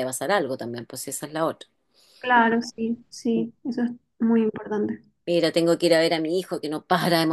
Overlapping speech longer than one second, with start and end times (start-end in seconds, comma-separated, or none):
none